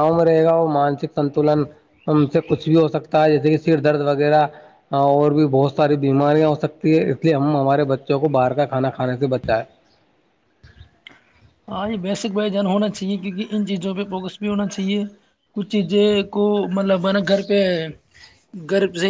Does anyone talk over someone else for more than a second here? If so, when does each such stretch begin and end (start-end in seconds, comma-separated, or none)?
none